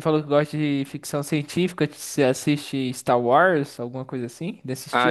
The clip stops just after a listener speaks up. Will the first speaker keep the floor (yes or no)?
no